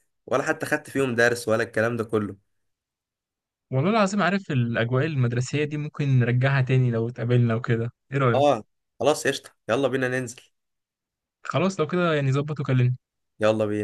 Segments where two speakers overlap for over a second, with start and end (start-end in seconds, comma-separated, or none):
none